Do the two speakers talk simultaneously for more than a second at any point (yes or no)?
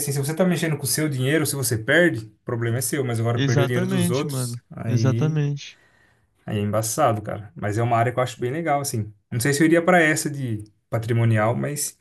yes